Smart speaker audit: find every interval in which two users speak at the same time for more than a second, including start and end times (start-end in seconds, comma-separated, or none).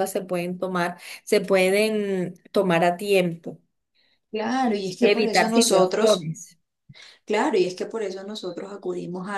5.0-6.3